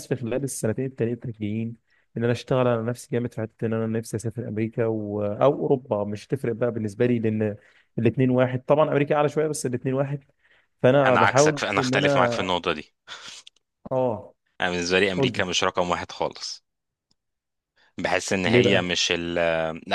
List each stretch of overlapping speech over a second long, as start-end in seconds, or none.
11.1-12.4